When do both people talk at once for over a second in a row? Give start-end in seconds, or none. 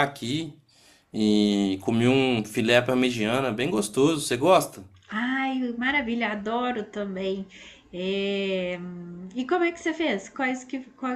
none